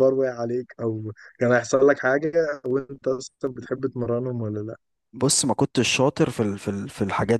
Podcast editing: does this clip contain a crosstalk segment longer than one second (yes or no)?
no